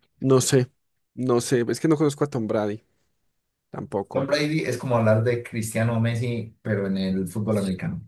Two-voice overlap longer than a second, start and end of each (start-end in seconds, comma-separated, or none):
none